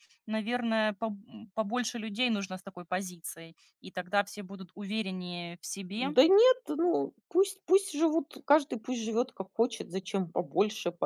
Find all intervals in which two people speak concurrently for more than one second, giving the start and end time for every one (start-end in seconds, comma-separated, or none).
none